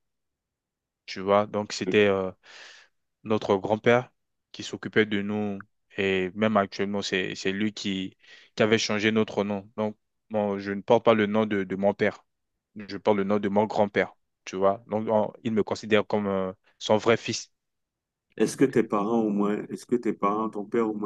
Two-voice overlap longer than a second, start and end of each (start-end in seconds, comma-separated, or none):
none